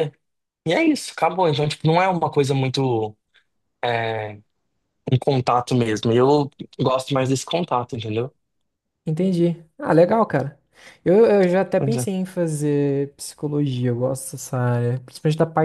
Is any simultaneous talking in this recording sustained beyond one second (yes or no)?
no